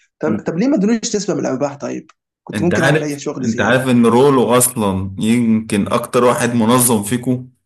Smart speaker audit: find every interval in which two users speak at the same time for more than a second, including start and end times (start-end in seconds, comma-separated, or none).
2.5-3.9